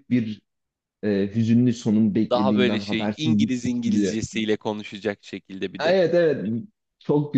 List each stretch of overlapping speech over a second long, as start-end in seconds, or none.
2.3-4.2